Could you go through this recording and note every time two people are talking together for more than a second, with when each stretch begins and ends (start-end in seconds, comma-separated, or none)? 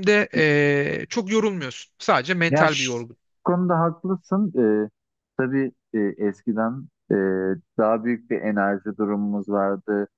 none